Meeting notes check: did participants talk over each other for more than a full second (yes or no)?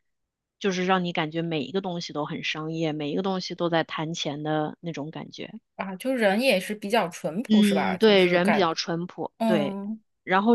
yes